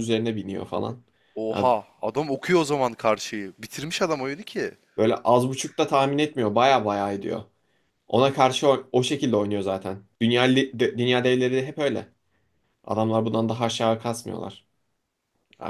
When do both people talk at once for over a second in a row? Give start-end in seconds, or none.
none